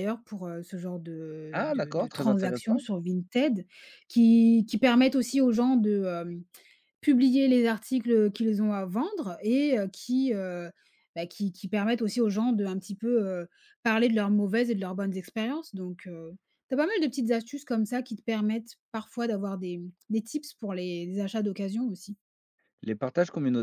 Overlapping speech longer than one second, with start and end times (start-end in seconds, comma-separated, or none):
1.5-2.8